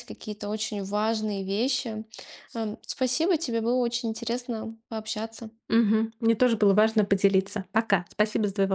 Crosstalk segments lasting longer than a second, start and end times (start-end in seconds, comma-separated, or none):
none